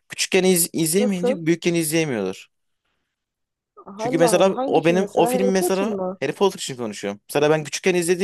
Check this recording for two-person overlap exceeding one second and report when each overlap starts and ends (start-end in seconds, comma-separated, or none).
4.0-6.2